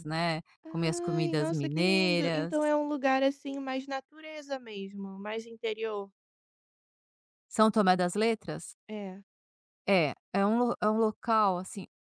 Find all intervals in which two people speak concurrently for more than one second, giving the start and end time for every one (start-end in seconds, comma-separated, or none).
0.6-2.5